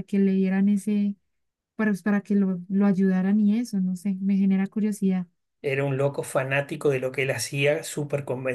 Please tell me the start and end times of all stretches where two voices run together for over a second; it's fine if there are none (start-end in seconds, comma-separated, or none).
none